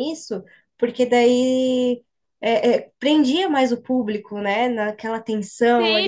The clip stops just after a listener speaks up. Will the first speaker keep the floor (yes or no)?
no